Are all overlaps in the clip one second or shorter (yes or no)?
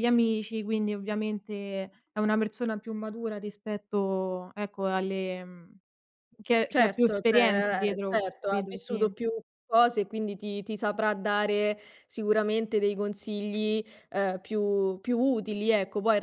no